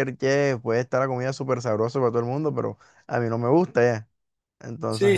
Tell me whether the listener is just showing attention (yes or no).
no